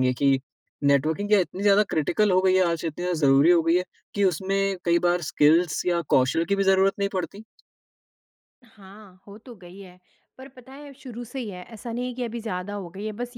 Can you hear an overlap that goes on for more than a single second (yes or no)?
no